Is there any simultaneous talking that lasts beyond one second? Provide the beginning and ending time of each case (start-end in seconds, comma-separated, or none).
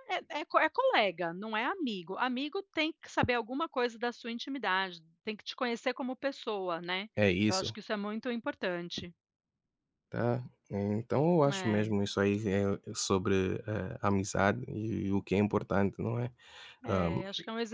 none